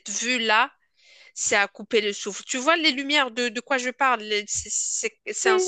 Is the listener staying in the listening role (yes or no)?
no